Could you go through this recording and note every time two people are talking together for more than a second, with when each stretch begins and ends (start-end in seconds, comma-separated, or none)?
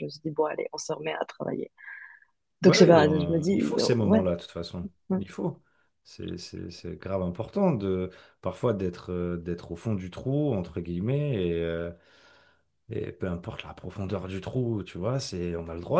2.6-4.2